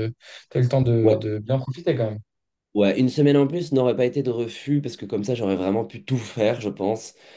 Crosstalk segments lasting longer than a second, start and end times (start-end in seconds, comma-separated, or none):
none